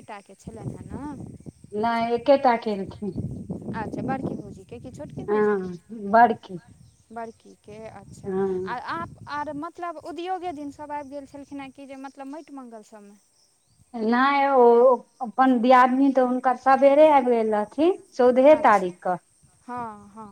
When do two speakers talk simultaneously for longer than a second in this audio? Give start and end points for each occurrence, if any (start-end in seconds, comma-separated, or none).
none